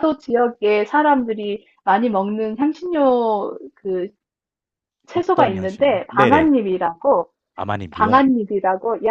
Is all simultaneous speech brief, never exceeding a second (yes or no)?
no